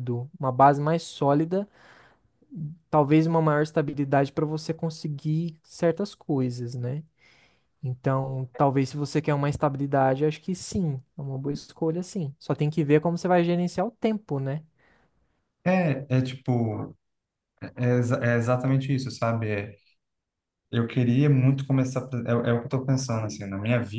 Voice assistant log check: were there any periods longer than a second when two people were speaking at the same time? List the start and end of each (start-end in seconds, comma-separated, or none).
none